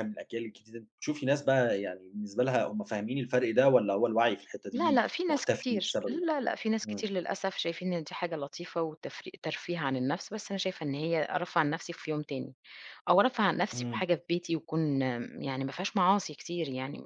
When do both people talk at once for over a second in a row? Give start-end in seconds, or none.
4.7-6.2